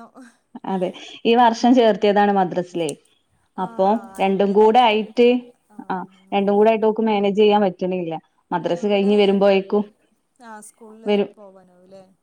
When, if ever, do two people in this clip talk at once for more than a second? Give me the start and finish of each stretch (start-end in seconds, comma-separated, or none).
3.6-5.3